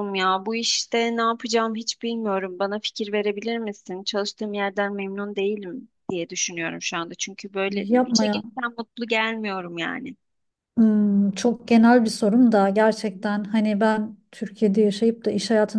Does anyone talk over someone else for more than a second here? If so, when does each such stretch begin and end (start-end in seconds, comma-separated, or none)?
none